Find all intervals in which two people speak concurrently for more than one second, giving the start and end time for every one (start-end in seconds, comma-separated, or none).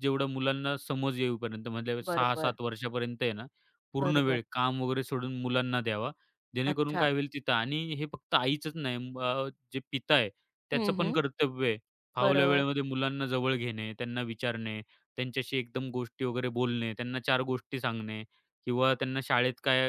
none